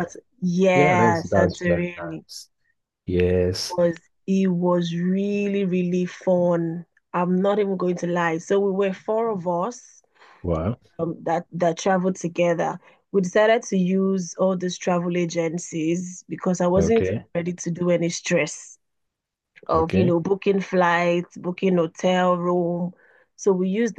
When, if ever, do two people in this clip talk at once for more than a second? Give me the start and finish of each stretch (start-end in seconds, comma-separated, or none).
0.7-2.2